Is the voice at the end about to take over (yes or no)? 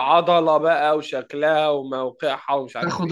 yes